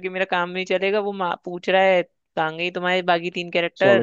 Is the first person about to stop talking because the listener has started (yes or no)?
yes